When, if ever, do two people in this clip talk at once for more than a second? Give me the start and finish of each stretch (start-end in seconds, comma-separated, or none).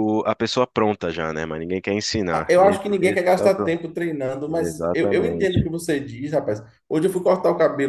2.3-3.8, 4.5-5.7